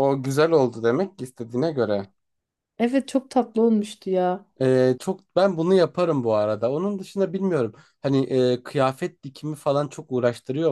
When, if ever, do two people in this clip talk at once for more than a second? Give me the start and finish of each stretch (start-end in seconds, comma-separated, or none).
none